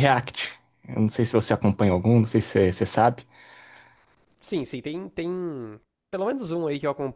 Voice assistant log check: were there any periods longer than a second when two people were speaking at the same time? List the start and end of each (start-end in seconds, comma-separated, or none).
none